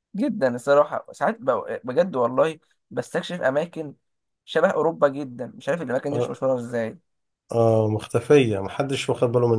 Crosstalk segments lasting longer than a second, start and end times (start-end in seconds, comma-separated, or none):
none